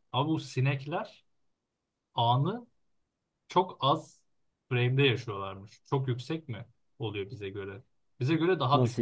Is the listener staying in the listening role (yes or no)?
yes